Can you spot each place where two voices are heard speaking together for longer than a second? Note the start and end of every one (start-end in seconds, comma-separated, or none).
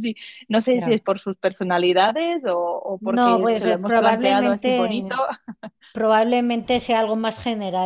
3.0-5.2